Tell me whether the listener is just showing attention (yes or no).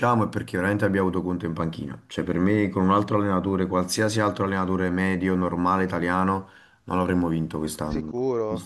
no